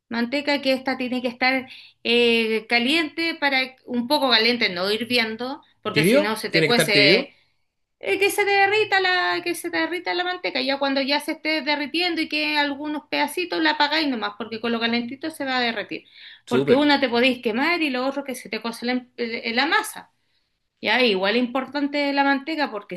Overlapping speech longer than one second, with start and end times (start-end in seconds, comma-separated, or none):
5.9-7.3